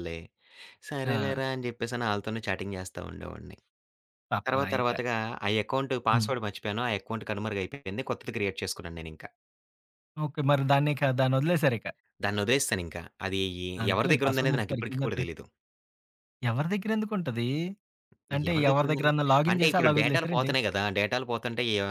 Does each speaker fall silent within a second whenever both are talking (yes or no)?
no